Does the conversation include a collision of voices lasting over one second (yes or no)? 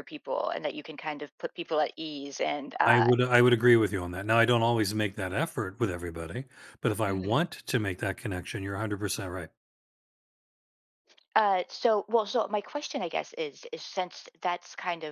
no